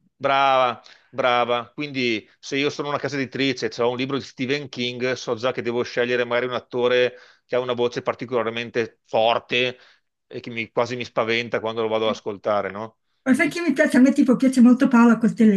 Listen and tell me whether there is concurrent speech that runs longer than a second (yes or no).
no